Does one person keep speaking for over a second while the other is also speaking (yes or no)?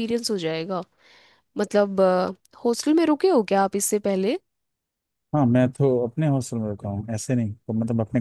no